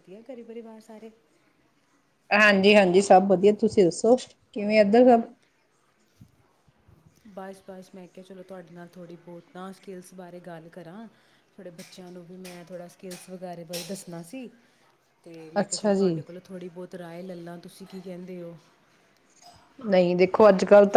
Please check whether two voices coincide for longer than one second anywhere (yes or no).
no